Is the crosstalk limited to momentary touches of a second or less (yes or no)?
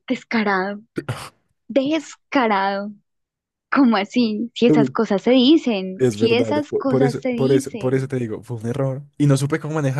no